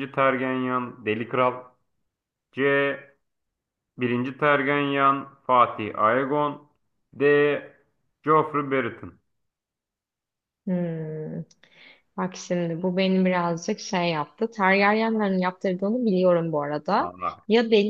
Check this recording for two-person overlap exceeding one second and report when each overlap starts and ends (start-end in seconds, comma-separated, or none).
none